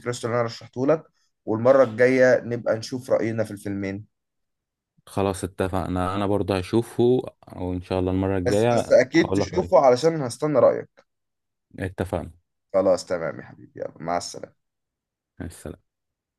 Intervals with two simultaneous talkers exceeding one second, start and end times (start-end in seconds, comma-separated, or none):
8.5-9.7